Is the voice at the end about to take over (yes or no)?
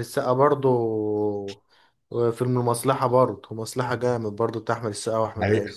yes